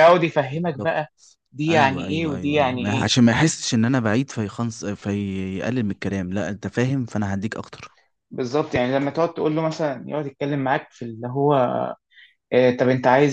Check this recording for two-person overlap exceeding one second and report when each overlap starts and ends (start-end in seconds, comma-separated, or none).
1.7-3.1